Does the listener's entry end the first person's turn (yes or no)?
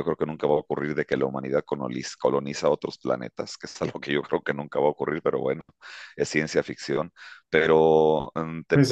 yes